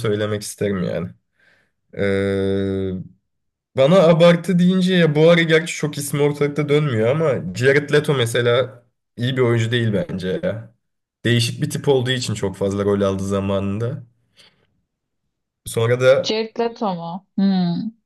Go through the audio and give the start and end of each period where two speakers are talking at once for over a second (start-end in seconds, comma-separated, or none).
none